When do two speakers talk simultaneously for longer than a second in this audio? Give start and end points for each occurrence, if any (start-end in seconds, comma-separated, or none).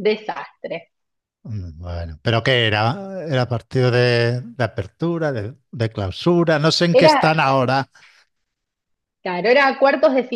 none